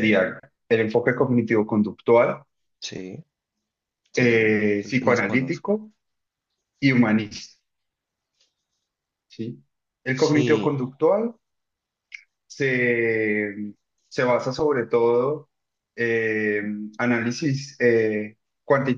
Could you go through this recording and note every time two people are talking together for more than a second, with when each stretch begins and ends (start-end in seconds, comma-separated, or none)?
4.1-5.8